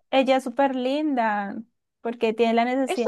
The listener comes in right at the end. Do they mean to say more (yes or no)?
no